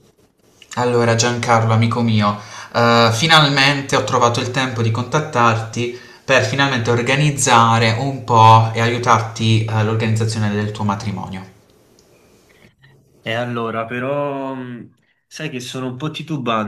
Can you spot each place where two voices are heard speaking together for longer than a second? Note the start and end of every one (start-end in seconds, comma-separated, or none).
none